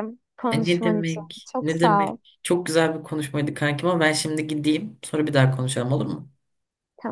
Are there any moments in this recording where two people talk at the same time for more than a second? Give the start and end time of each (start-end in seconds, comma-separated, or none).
0.5-2.2